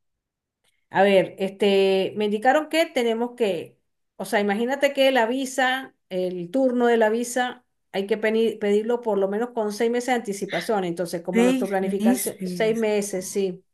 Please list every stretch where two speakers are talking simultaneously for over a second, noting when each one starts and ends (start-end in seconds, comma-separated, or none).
11.3-12.9